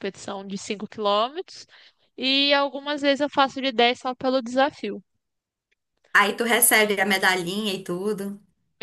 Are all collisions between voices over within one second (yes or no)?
yes